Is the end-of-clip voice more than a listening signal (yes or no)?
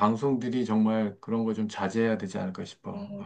yes